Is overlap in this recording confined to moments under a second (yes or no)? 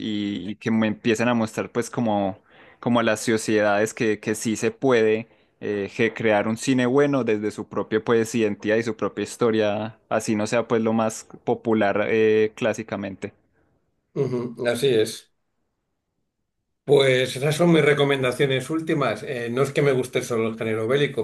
yes